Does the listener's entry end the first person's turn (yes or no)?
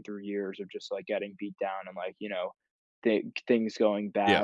no